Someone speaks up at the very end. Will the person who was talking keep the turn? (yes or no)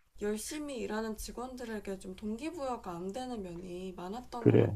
no